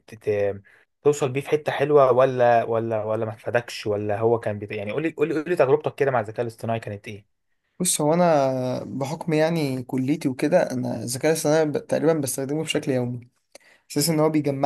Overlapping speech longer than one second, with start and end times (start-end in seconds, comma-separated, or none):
none